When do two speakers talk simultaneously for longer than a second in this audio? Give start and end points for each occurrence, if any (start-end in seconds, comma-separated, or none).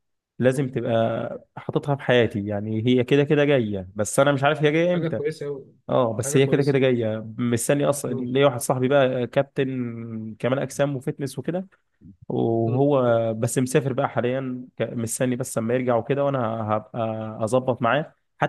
none